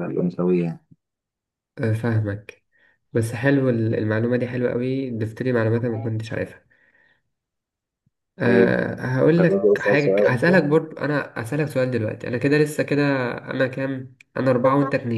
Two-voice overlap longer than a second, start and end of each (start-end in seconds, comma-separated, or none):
9.4-10.7